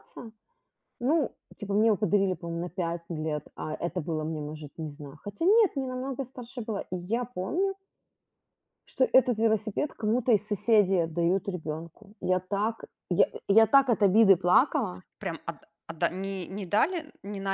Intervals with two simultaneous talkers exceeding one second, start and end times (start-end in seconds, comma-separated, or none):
none